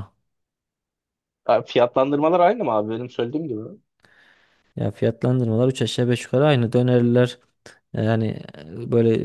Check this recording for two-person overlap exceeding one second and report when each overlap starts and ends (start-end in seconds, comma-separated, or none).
none